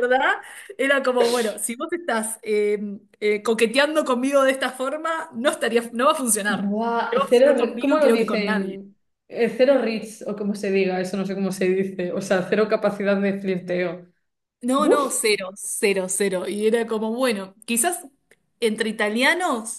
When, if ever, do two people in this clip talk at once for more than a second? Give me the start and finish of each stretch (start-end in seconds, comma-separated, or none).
6.5-8.8